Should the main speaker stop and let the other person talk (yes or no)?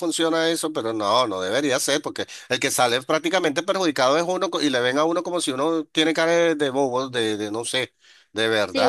yes